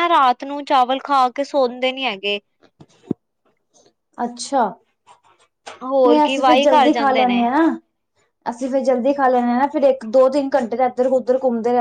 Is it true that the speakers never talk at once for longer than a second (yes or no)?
no